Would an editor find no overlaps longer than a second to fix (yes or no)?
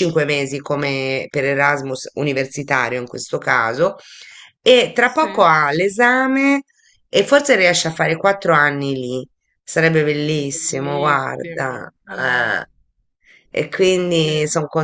no